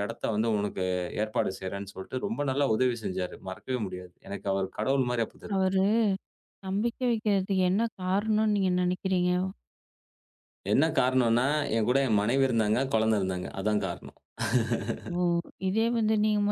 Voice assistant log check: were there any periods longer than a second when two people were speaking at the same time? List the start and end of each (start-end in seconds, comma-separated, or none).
none